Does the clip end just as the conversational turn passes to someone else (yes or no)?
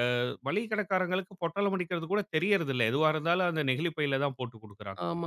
yes